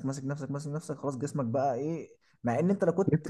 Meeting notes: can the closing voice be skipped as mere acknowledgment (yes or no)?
yes